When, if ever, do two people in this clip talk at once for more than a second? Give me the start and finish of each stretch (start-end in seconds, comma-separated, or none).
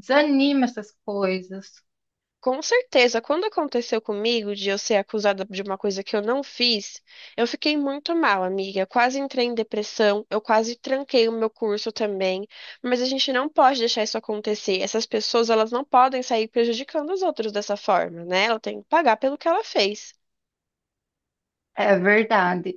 none